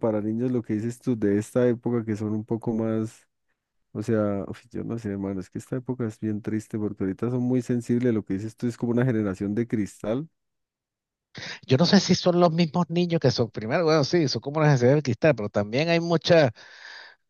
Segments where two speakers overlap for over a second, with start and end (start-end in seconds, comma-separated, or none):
none